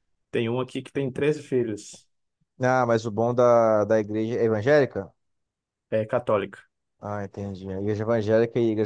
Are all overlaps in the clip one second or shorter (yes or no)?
yes